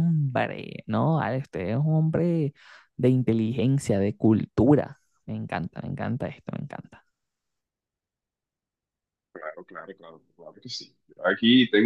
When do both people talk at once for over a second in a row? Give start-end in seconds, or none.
none